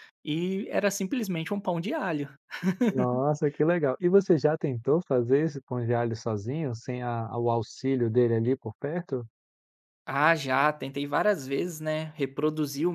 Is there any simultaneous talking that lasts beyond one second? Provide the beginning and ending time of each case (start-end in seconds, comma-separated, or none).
none